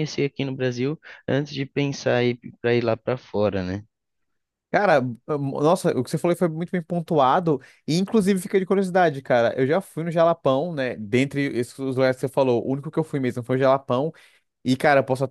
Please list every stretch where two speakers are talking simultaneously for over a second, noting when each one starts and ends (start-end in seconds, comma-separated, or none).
none